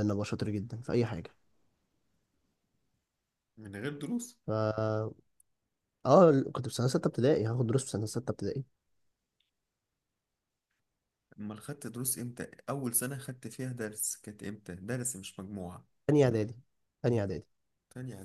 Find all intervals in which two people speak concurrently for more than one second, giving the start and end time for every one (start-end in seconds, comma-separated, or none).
none